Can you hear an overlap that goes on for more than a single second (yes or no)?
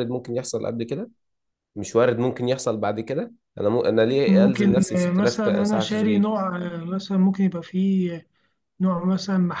yes